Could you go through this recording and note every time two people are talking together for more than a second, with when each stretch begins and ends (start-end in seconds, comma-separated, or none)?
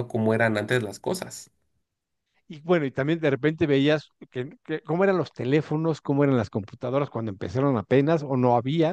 none